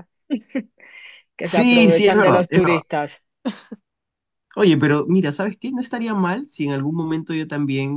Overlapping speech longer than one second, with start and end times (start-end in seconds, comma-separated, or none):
1.4-2.8